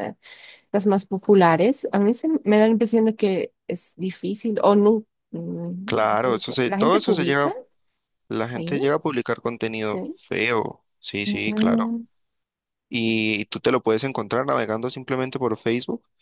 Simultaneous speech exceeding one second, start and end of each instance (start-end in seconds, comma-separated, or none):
5.8-7.5